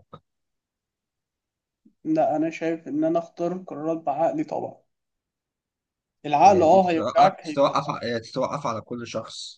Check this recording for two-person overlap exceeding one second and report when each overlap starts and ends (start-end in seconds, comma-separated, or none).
6.5-7.8